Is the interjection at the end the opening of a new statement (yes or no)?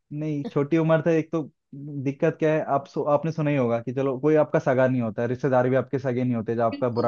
yes